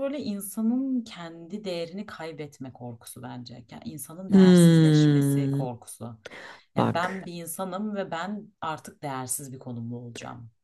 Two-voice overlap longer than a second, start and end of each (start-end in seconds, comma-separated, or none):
4.3-5.7